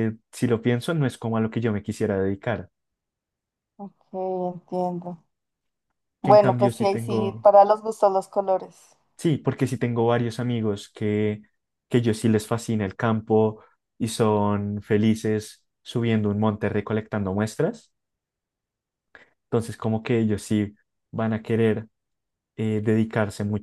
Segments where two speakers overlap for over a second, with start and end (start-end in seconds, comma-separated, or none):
6.2-7.5